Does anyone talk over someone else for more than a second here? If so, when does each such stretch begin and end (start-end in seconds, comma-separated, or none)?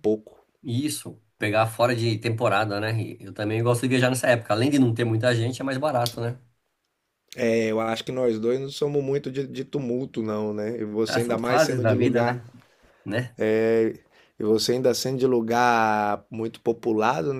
11.1-12.4